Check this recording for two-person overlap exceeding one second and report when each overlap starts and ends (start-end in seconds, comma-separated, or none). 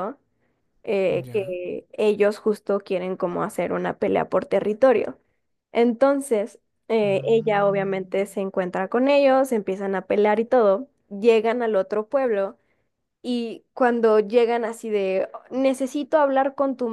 7.0-8.2